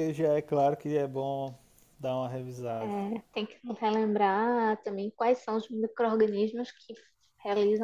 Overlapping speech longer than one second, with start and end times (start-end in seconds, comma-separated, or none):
none